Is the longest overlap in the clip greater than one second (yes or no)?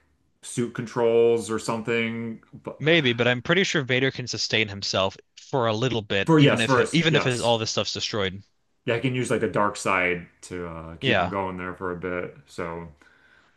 yes